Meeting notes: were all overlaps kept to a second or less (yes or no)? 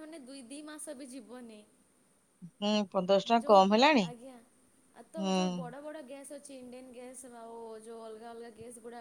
yes